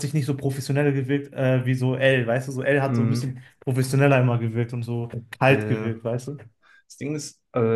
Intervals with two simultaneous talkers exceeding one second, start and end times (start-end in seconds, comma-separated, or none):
none